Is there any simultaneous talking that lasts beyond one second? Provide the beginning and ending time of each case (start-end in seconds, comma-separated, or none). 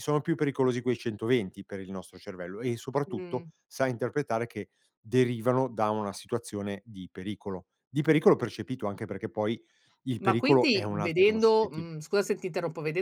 10.2-11.9